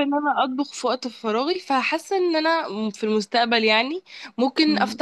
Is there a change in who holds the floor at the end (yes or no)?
no